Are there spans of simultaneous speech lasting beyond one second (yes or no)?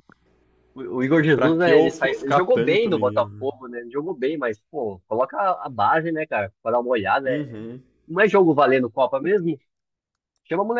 yes